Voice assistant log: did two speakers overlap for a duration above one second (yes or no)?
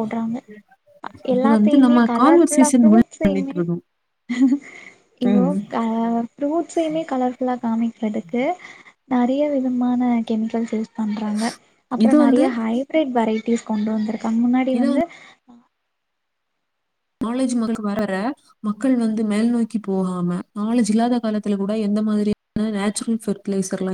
yes